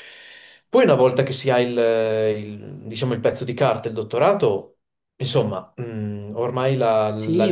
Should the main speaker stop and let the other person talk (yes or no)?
yes